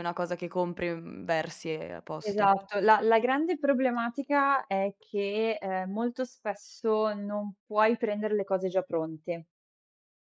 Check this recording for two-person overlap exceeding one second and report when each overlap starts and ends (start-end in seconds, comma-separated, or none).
none